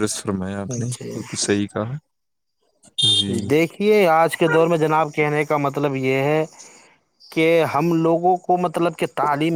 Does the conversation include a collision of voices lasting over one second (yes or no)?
no